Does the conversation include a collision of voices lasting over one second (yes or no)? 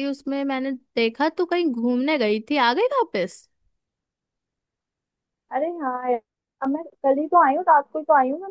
no